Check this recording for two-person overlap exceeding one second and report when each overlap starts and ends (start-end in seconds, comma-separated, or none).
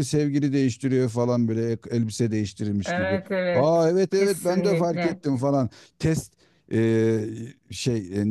2.8-5.2